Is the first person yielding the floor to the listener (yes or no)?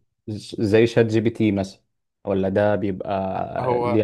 no